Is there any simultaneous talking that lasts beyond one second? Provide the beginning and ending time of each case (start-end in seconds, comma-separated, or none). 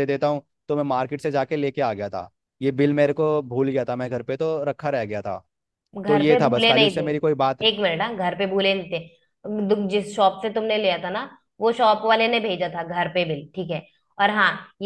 6.1-7.6